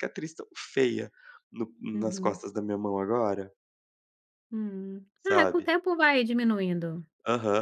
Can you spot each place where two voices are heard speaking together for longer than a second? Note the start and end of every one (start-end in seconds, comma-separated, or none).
none